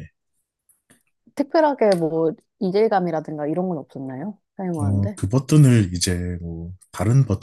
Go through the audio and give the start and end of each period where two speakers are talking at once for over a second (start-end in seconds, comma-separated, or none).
none